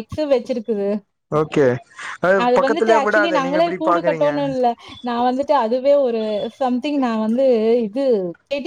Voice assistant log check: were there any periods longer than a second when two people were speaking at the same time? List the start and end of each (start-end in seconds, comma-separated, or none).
2.6-4.3